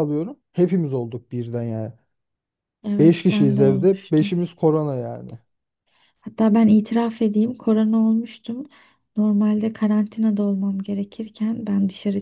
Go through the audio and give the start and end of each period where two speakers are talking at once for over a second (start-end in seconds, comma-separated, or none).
3.0-4.4